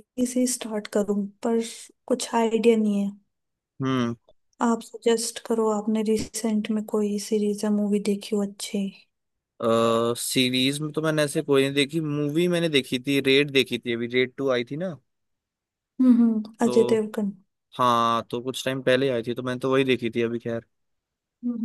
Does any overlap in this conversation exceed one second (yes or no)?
no